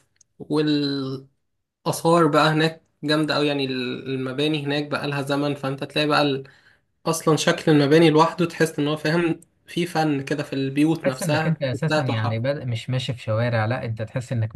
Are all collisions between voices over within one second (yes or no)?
no